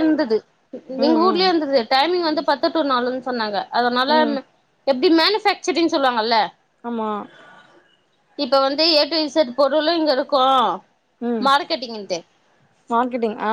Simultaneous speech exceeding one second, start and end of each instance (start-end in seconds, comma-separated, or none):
none